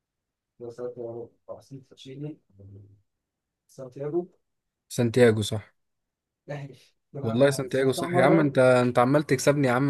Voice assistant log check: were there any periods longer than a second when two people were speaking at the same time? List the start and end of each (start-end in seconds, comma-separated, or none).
7.2-8.6